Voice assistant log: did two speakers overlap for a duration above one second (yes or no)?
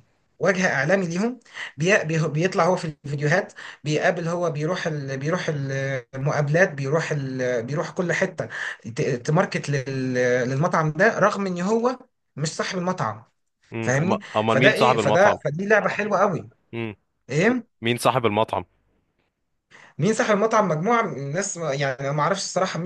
yes